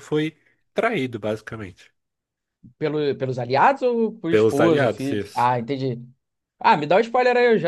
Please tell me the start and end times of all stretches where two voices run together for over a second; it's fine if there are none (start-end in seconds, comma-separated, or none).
4.3-5.5